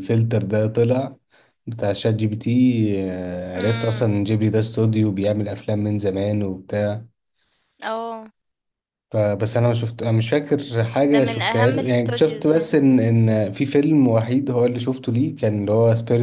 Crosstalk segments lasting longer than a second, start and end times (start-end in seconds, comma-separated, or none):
11.1-12.8